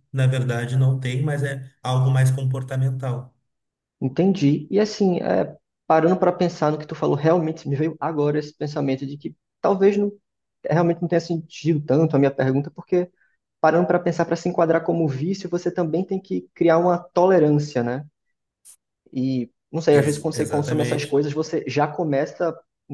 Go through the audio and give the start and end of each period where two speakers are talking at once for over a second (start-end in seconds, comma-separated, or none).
19.9-21.2